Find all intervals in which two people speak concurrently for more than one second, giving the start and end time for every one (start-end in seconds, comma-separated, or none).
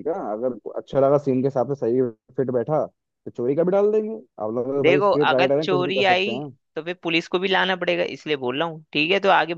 4.8-6.4